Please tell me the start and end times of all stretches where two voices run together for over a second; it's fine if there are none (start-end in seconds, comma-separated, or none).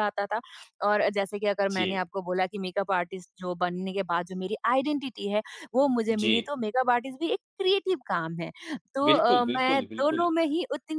9.1-10.3